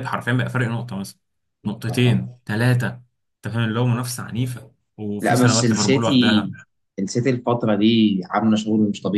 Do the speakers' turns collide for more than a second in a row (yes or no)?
yes